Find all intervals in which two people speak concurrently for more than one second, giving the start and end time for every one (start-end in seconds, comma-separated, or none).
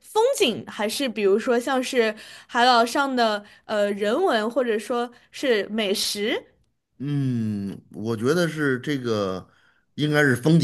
none